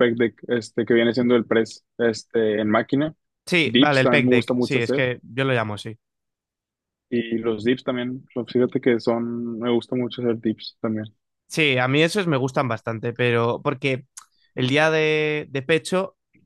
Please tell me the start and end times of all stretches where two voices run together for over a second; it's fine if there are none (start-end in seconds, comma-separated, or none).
3.6-5.0